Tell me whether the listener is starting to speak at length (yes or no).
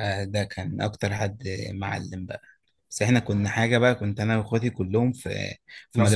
no